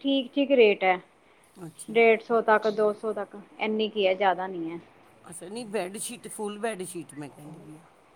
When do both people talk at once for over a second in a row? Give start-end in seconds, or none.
none